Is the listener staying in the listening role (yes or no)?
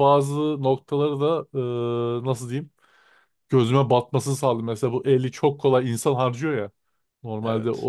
yes